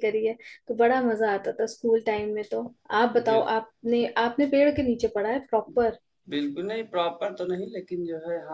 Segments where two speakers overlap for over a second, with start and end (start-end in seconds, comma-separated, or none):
none